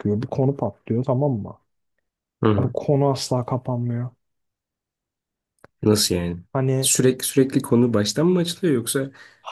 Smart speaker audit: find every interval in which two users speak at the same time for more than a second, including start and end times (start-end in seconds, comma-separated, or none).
none